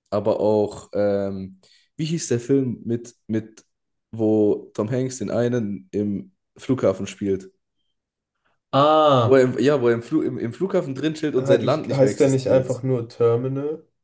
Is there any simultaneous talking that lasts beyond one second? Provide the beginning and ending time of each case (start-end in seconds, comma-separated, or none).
11.4-12.7